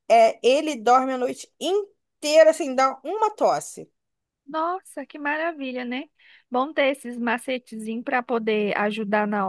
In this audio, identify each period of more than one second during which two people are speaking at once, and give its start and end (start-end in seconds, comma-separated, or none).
none